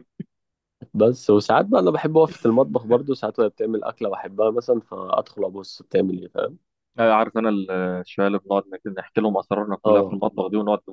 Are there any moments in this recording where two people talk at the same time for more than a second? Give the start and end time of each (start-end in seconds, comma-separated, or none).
none